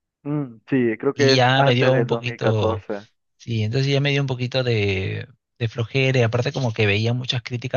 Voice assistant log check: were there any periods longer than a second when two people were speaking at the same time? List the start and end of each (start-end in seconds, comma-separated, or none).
1.1-2.8